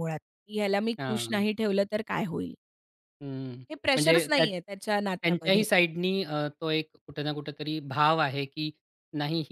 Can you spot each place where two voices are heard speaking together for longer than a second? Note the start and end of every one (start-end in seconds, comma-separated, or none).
4.0-5.6